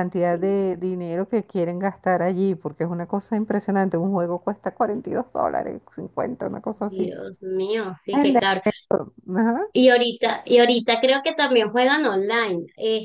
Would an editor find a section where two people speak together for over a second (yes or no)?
no